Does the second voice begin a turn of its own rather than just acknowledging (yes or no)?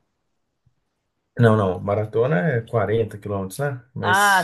yes